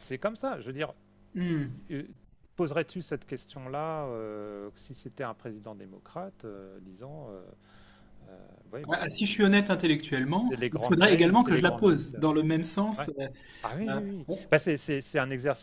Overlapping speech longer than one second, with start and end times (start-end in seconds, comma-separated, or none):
10.5-12.2